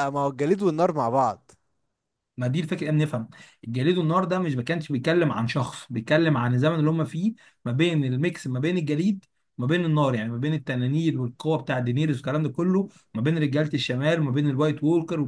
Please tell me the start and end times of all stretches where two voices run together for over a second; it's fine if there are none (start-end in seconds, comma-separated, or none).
none